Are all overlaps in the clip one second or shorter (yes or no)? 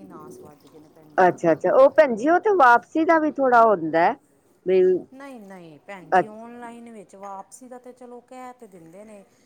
yes